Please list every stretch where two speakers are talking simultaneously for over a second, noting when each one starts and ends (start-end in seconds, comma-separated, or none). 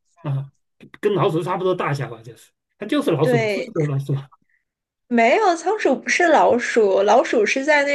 none